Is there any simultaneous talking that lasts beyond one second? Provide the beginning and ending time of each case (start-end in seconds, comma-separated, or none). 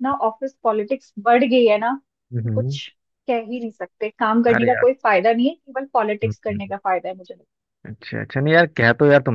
none